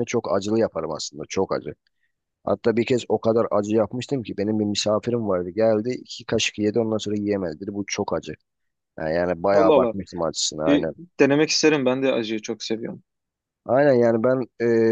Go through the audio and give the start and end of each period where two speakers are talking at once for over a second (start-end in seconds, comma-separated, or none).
none